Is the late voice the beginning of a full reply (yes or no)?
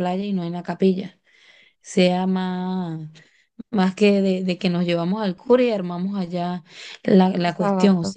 no